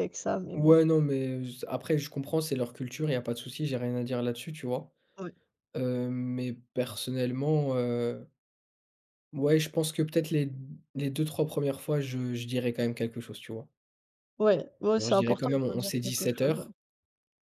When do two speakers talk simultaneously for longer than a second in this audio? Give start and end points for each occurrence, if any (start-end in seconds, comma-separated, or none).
15.0-16.7